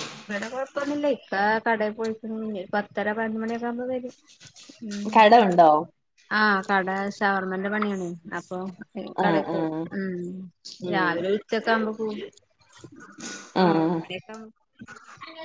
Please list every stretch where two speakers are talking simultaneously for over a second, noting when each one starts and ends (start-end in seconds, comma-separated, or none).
none